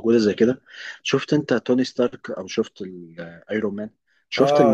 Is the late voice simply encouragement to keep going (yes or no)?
no